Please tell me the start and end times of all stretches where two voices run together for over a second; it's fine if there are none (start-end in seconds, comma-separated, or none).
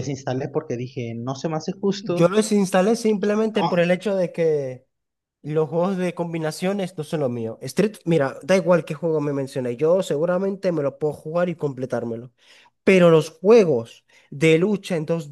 none